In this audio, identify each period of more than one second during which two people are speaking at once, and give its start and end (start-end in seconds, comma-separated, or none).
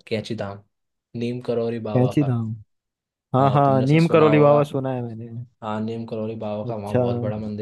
3.4-4.6